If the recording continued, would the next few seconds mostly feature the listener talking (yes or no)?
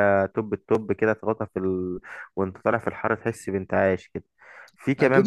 yes